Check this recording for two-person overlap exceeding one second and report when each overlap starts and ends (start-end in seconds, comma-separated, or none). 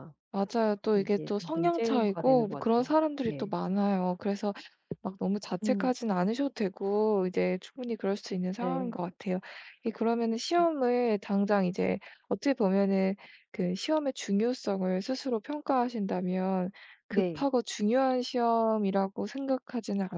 0.9-3.5